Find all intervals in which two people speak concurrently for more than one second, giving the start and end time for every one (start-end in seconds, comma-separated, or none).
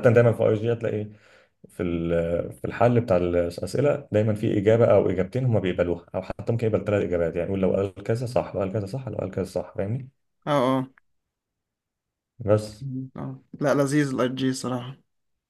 none